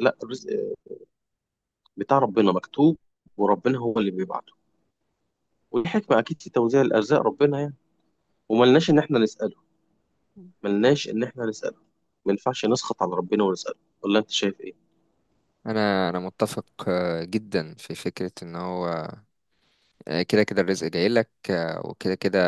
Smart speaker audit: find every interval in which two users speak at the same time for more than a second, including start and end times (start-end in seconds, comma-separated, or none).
none